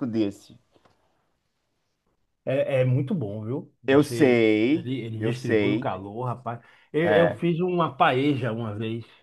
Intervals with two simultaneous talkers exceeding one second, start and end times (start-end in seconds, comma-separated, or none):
3.9-5.9